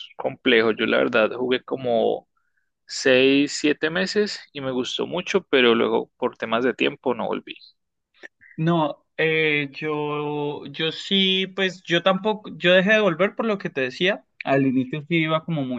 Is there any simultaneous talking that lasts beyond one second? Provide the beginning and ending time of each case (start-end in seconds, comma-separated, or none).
none